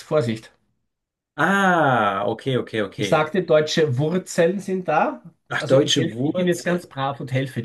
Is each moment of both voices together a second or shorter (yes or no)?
no